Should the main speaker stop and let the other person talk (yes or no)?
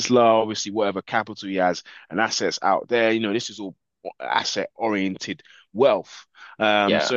no